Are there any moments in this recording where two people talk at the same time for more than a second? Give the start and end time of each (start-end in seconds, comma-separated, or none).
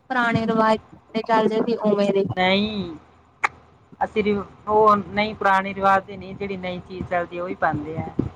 none